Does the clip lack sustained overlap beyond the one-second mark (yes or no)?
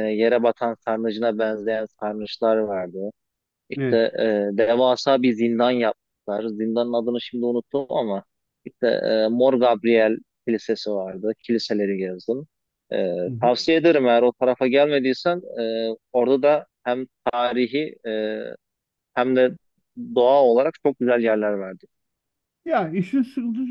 yes